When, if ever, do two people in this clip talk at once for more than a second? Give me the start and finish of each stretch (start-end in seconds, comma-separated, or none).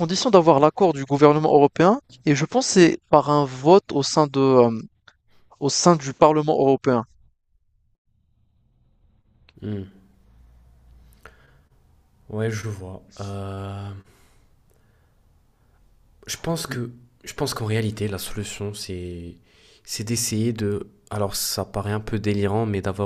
none